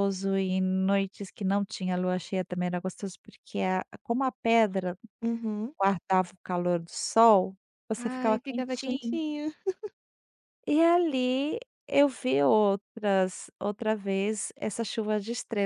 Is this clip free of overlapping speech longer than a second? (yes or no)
no